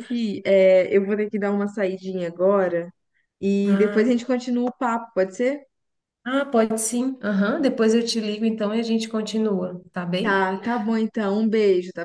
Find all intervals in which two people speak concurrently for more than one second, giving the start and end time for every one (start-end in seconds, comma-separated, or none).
none